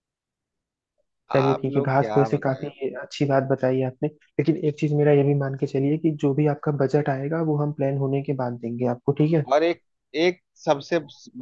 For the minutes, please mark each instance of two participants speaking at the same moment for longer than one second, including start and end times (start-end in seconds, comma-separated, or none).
1.4-2.7